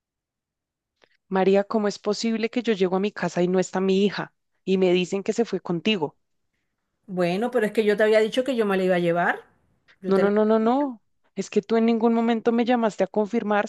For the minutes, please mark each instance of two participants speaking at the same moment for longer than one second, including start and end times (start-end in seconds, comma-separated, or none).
none